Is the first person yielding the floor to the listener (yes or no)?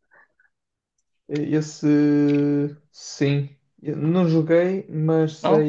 no